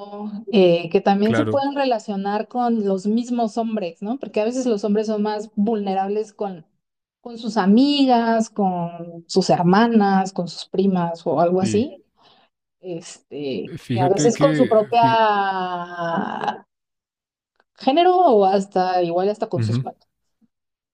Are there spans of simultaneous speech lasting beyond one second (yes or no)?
yes